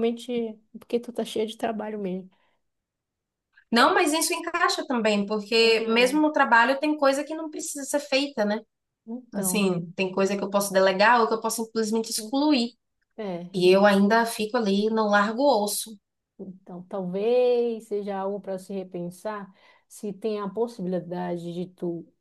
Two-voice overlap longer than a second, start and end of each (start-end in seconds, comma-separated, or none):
none